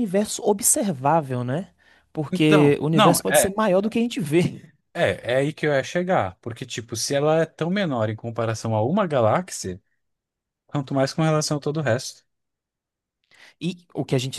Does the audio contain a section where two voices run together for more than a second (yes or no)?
yes